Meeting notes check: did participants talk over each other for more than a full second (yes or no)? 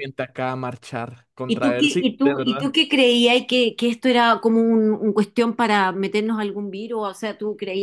yes